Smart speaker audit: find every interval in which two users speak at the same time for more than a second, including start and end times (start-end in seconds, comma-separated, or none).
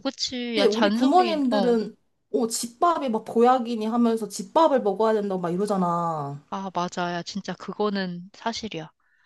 0.5-1.8